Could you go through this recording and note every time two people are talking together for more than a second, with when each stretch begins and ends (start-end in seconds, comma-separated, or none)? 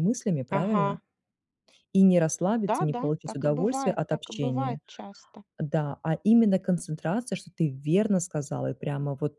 2.7-4.8